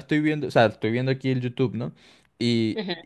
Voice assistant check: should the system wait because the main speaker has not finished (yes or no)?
yes